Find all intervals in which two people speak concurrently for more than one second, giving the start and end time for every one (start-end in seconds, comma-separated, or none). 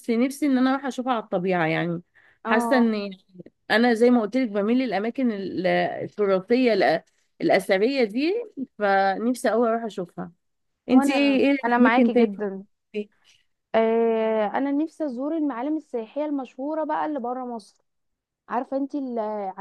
10.9-12.3